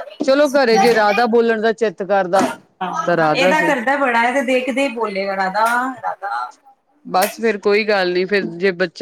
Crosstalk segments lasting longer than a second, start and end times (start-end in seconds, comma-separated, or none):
none